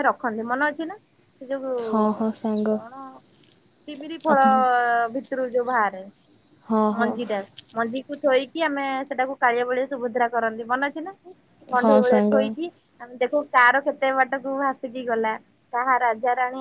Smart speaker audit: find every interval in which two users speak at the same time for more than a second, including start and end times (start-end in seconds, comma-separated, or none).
none